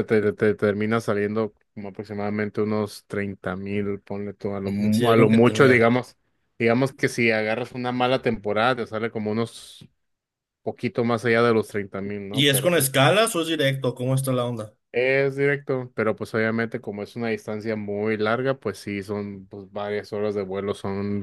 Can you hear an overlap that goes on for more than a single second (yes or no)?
yes